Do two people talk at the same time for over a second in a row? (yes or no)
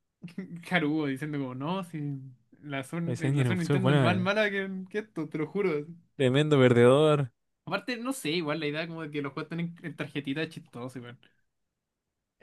yes